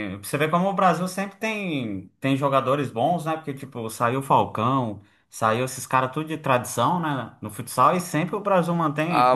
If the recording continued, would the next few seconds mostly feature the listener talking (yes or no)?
yes